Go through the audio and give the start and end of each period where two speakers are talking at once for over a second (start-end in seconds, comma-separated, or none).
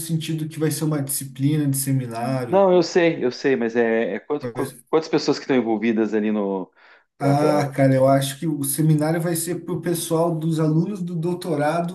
none